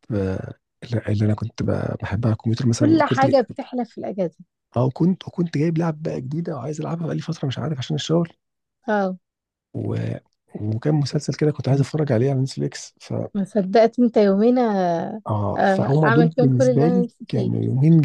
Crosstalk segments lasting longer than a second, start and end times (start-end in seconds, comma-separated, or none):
15.6-17.5